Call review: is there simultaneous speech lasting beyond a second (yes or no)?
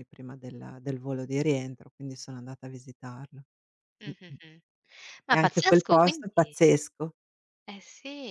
yes